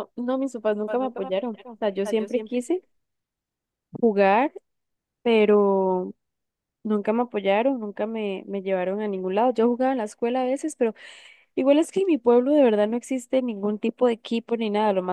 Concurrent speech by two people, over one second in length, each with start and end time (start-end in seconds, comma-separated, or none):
0.8-2.6